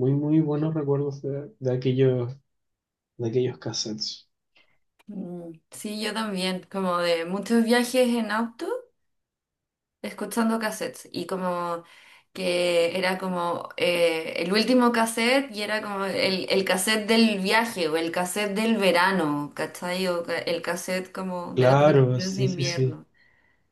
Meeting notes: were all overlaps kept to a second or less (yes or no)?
no